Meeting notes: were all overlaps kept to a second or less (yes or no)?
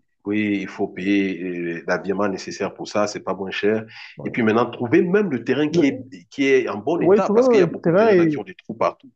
no